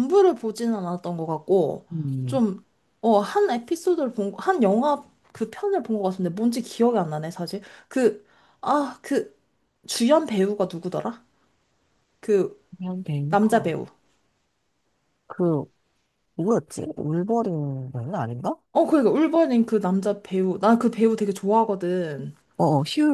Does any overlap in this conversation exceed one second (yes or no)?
no